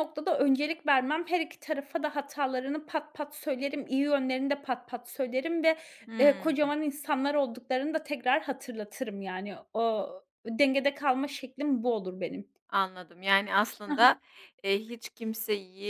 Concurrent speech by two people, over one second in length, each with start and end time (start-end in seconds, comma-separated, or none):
none